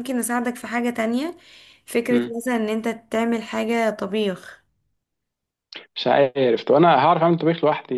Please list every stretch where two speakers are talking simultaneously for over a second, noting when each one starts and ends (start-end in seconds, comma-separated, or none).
none